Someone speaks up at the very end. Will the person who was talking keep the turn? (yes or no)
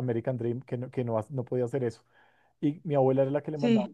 yes